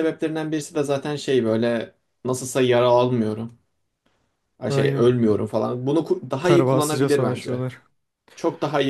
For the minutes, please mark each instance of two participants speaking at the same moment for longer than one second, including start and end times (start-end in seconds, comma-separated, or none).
6.4-7.7